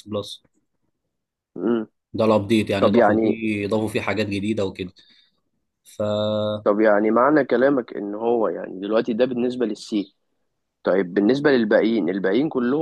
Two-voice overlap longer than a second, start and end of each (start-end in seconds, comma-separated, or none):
none